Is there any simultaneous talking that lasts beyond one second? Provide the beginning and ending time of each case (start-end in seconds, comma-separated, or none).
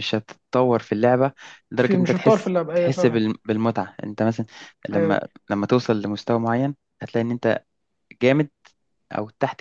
1.8-3.2